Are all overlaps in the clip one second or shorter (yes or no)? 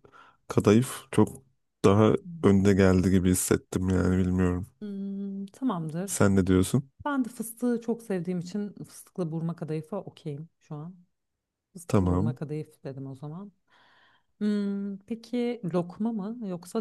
yes